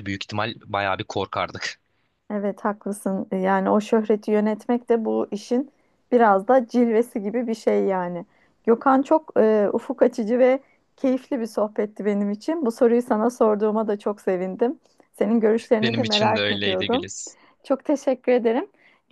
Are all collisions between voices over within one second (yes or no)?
no